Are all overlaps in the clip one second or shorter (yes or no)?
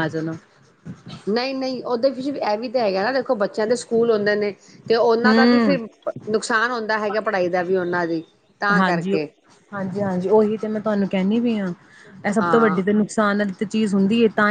yes